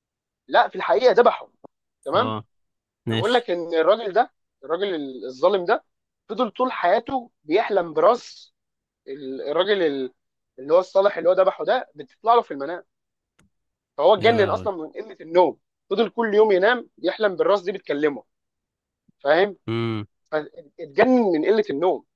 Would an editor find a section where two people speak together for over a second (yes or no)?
no